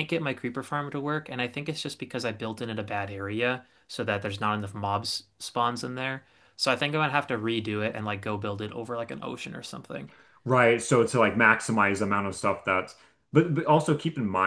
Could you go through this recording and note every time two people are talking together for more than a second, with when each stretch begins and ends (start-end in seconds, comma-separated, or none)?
none